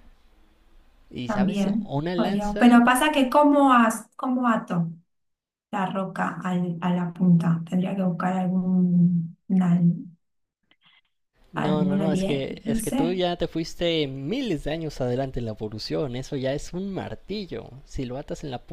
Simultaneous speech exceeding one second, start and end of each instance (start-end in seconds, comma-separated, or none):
1.2-2.8, 11.5-13.2